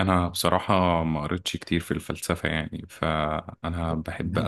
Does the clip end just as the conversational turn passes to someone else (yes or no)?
no